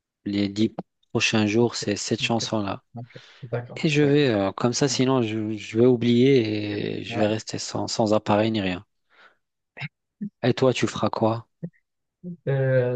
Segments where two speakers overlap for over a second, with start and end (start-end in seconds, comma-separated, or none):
none